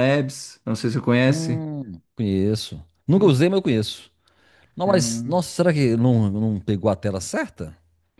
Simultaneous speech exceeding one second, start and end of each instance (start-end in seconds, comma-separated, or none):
none